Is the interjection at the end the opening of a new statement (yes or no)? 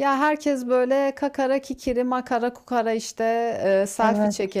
no